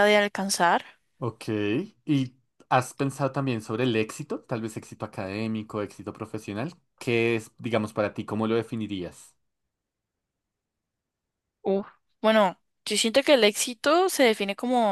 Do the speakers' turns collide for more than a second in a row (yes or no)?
no